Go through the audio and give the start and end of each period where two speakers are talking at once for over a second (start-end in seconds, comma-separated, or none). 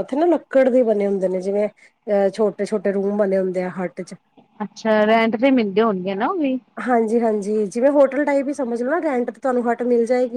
none